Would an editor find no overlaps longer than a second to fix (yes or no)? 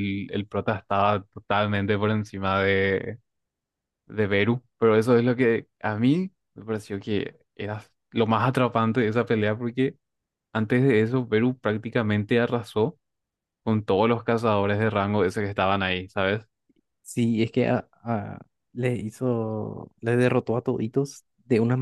yes